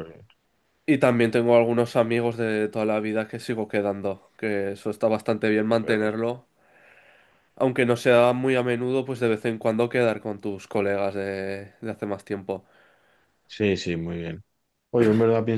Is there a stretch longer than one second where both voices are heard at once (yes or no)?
no